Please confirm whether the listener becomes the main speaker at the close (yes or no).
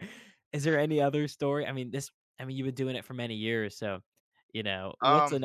no